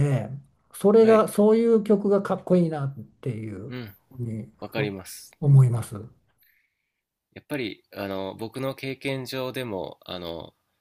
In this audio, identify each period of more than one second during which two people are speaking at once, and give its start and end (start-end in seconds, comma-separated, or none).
none